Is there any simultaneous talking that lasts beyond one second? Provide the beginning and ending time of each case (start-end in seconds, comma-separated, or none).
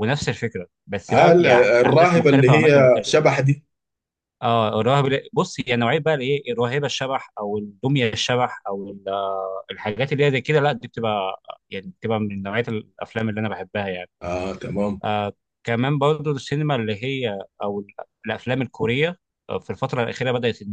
1.1-3.1